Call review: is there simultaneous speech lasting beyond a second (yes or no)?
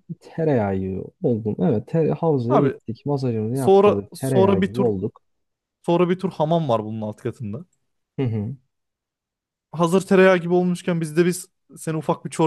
yes